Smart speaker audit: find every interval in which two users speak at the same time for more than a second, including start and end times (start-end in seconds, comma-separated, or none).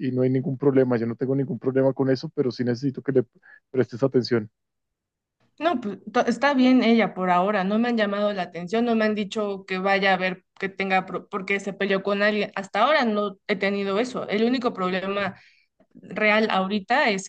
none